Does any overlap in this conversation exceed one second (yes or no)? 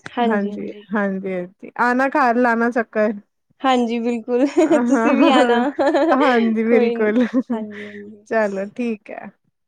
no